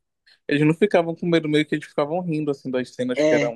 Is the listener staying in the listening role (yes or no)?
yes